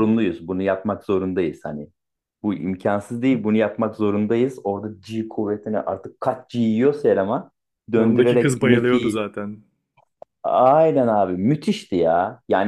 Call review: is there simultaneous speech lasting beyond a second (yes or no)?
yes